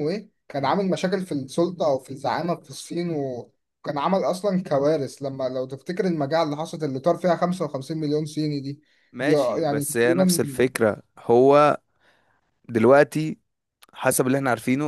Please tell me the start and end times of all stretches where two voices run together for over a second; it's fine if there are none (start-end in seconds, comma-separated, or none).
9.2-10.4